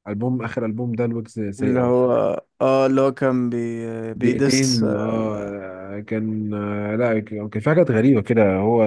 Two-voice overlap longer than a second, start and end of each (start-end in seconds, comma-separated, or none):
4.2-5.6